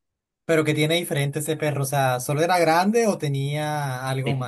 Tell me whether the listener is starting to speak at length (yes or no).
yes